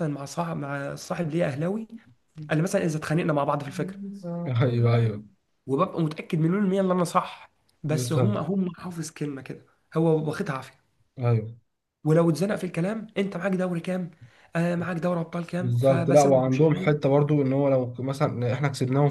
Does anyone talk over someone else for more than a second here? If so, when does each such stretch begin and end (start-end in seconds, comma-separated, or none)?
15.6-17.0